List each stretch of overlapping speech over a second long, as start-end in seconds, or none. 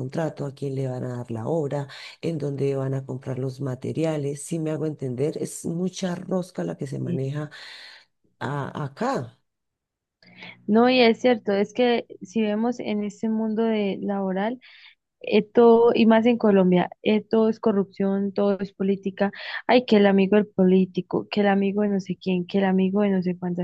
none